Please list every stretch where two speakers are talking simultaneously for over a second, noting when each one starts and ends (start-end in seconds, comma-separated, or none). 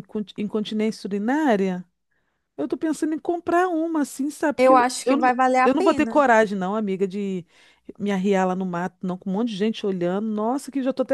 4.6-6.2